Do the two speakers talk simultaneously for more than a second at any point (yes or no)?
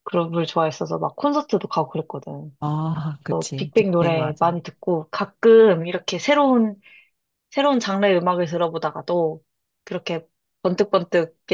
yes